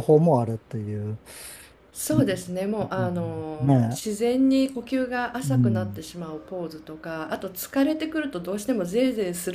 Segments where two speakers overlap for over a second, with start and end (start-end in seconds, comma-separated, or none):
none